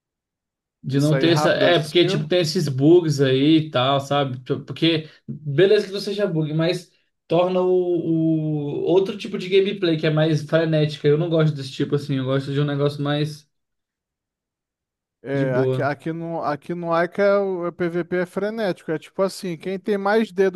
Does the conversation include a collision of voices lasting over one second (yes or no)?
yes